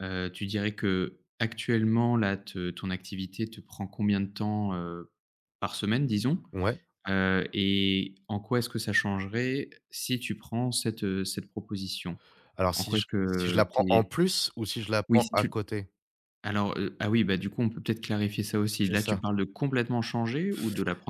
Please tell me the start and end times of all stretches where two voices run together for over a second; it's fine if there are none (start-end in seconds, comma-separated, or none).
12.7-14.1